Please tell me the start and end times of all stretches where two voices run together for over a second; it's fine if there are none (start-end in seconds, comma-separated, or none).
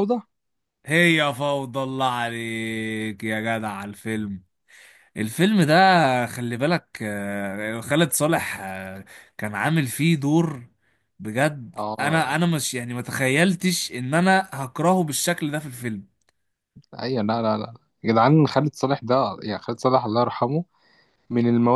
none